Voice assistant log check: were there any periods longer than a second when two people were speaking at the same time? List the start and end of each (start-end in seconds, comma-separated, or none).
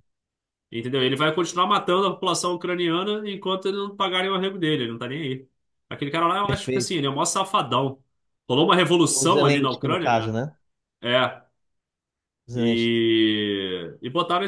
9.1-10.4